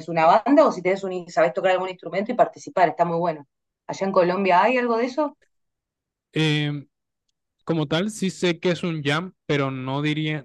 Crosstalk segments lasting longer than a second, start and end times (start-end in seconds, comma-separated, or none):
none